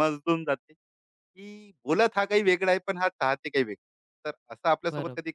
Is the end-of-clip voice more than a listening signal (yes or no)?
no